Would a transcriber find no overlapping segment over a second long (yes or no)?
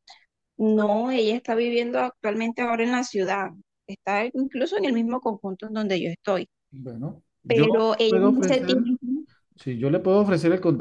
no